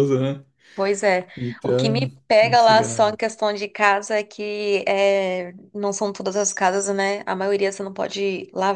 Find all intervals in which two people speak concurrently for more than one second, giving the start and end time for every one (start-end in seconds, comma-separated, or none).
1.6-3.2